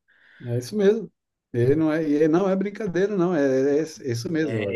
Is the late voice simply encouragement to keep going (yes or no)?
no